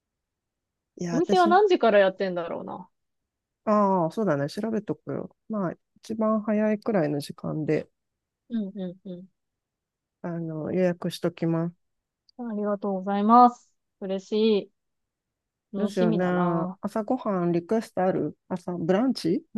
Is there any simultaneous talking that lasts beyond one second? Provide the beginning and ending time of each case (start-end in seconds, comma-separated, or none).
none